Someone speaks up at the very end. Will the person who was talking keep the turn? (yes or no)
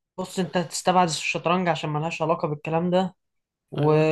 yes